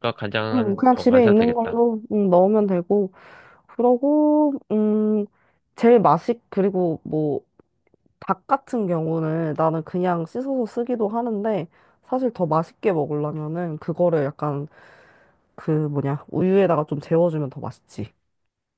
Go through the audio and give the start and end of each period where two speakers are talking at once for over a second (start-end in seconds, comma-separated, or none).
0.5-1.8